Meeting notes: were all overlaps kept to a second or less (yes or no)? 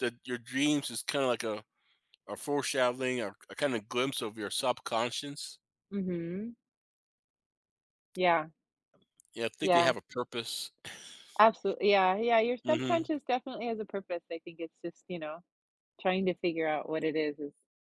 yes